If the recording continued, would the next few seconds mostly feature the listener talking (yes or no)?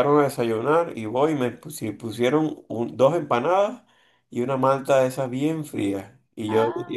no